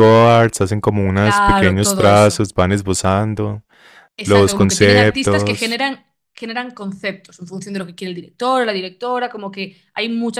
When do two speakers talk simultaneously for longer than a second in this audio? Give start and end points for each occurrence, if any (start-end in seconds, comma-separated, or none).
1.1-2.4, 4.2-5.8